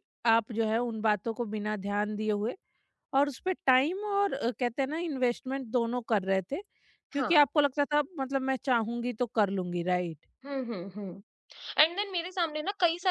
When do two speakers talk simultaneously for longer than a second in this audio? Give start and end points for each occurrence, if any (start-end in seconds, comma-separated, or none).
none